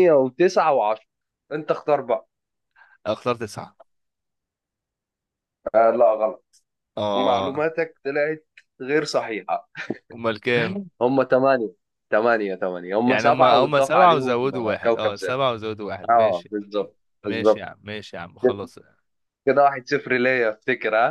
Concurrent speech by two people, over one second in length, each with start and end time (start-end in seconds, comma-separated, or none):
13.1-15.4